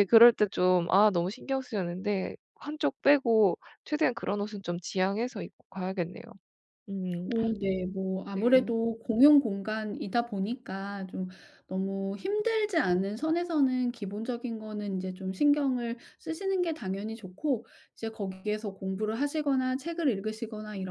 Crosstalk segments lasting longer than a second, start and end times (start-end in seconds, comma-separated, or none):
none